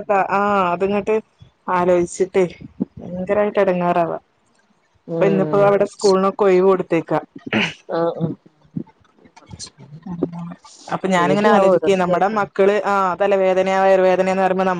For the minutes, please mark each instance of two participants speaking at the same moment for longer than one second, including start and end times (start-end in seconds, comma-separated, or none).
11.2-12.5